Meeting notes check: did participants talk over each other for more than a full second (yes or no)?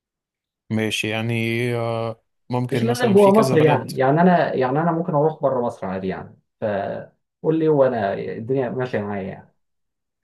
yes